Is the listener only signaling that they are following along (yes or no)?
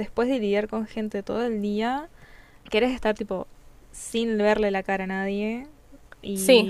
yes